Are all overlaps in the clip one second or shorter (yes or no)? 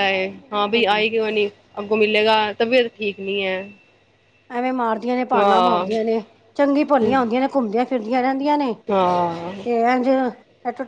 yes